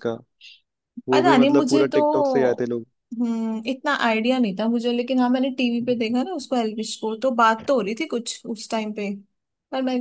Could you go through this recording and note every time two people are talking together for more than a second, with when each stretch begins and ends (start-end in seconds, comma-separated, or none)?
1.1-2.7